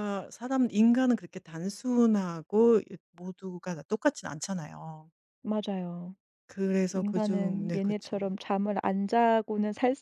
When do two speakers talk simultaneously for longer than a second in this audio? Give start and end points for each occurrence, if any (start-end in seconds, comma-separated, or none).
7.0-8.3